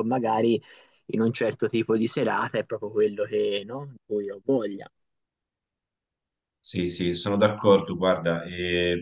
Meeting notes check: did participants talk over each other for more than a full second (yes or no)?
no